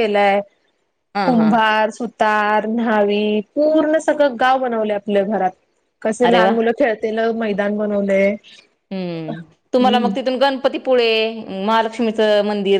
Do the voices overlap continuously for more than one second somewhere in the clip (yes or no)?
no